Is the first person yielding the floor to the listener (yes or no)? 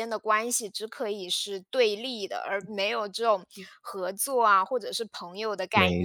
yes